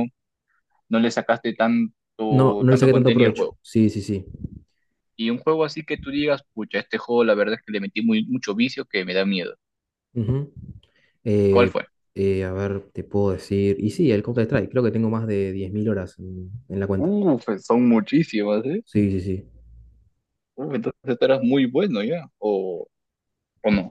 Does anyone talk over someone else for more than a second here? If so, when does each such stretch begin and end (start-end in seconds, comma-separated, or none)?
2.3-3.6